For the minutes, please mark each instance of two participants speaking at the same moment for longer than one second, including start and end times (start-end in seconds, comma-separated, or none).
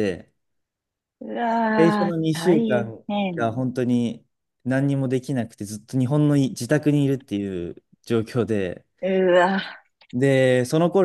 1.8-3.5